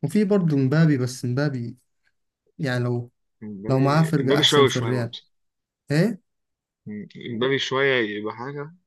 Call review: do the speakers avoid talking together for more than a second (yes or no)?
no